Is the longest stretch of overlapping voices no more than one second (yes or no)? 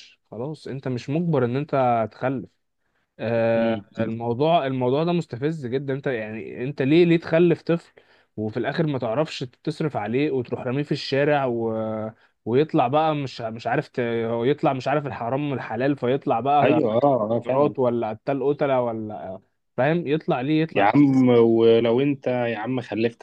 yes